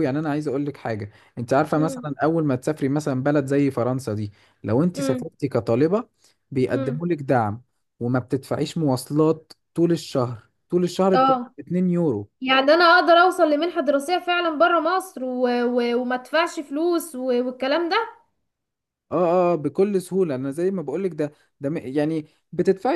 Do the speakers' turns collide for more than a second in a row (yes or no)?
no